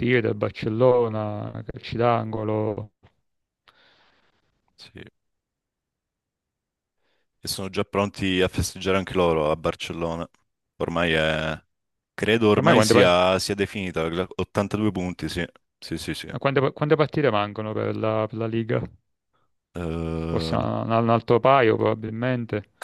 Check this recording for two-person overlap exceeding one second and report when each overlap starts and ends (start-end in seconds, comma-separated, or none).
none